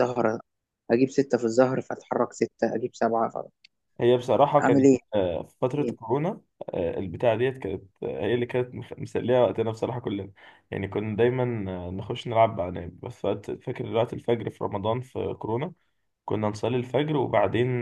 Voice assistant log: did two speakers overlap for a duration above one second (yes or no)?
no